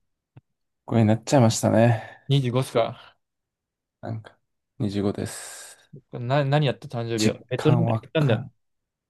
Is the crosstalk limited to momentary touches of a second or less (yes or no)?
no